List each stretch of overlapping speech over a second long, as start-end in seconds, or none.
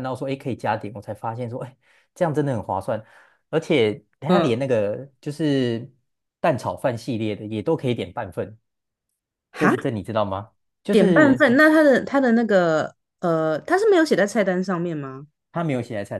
none